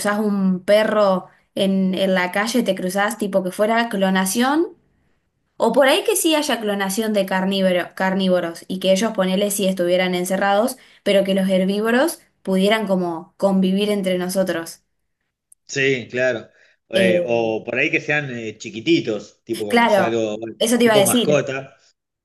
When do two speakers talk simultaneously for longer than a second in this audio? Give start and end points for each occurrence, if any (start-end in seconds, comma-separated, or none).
19.7-21.4